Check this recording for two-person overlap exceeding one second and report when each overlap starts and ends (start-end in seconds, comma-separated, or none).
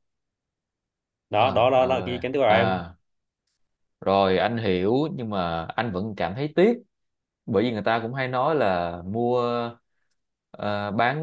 1.4-2.8